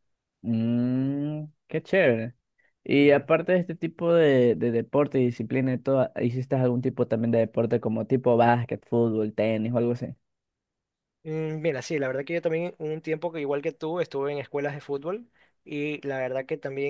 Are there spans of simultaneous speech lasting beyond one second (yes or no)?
no